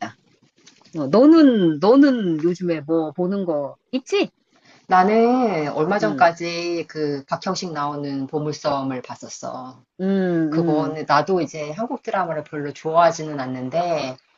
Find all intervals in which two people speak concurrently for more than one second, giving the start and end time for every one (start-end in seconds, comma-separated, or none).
none